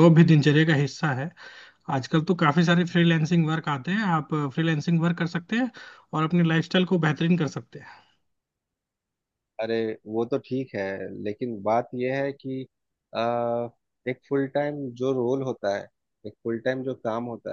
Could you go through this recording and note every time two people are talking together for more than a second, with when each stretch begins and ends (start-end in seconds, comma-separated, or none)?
none